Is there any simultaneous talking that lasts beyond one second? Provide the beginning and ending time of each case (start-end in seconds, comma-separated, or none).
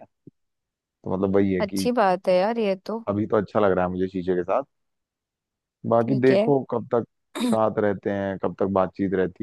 none